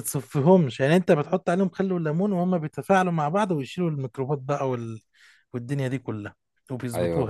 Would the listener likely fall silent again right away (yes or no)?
no